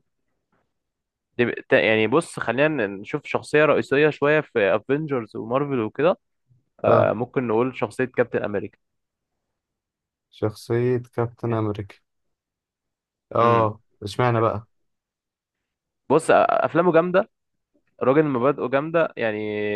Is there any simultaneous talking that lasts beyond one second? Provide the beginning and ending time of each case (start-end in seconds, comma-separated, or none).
none